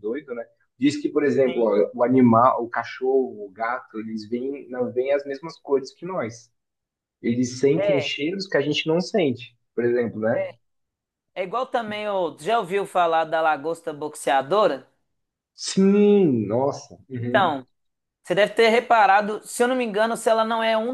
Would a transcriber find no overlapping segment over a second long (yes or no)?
yes